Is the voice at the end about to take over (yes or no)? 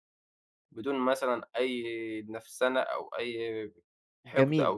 yes